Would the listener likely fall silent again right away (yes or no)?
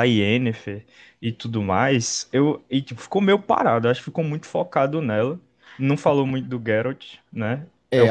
no